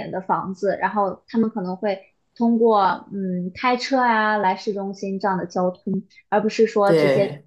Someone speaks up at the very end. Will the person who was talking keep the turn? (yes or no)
yes